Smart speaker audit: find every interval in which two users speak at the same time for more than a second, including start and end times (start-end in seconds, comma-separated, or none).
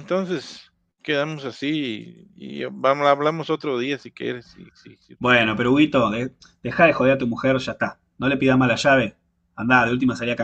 none